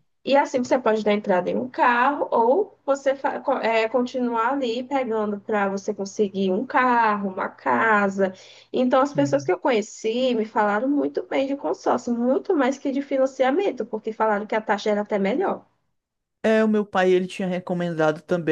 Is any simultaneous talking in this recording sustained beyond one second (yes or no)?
no